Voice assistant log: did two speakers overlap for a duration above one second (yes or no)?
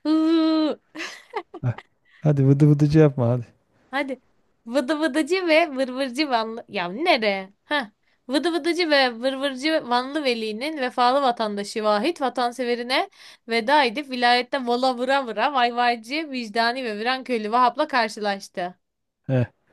no